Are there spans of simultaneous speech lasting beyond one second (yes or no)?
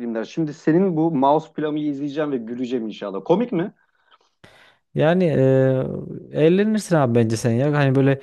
no